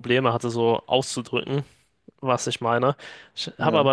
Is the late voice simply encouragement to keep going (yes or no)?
yes